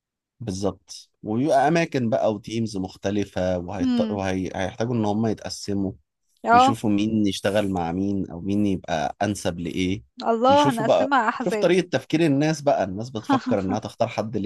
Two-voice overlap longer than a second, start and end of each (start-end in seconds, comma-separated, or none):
10.5-11.7